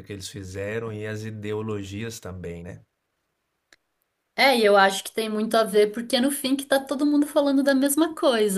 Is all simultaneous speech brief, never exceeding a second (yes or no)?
yes